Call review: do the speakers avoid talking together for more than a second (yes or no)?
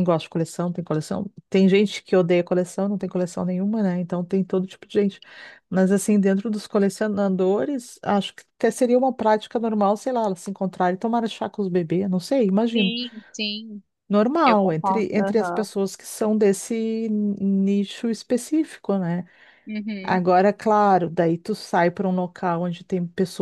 no